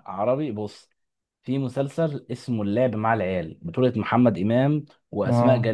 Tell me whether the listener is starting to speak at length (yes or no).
no